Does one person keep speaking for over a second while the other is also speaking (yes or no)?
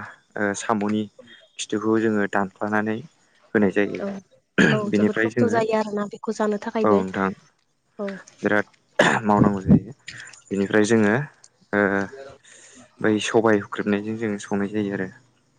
yes